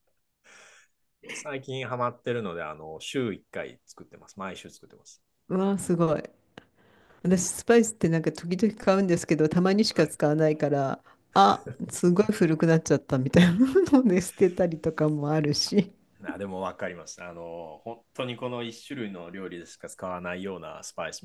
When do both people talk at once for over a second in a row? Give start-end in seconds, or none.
none